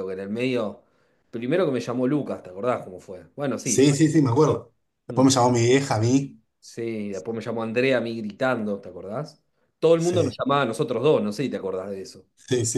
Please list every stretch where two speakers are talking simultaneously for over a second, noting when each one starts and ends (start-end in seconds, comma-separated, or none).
none